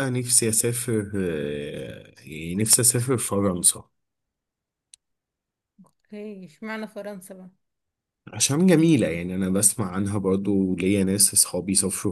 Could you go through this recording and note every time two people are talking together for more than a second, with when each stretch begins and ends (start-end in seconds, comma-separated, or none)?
none